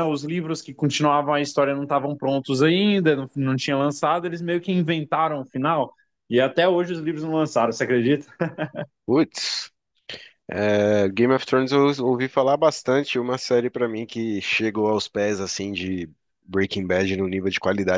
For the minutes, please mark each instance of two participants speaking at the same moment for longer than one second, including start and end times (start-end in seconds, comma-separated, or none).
none